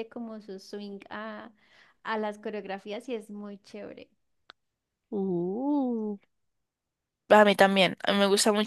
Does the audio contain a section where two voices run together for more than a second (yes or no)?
no